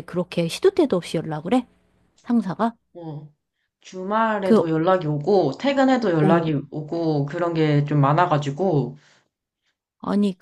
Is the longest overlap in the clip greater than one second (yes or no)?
no